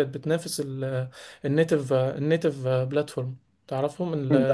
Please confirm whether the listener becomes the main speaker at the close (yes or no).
no